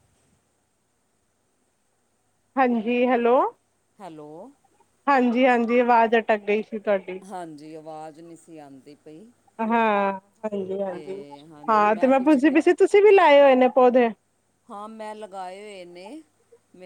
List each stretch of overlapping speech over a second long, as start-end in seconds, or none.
none